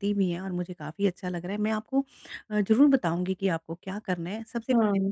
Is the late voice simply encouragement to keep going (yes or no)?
yes